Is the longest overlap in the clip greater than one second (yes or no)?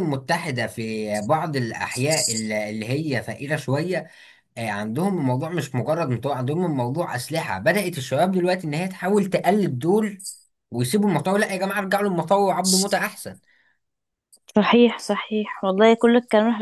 no